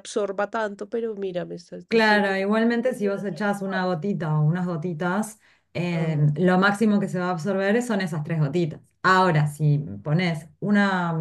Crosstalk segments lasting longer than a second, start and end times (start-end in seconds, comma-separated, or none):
1.9-4.0